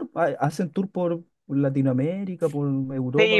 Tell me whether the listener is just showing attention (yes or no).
no